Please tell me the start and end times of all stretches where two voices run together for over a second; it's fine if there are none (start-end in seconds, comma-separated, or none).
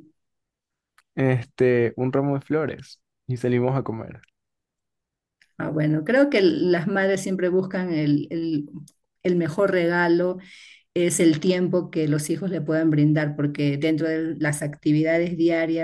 none